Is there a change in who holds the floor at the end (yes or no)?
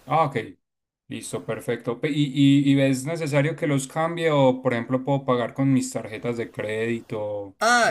yes